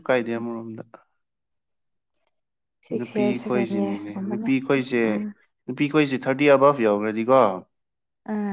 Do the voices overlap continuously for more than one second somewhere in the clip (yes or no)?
yes